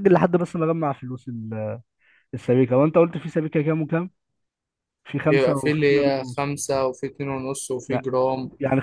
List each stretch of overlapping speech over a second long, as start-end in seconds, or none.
5.3-6.5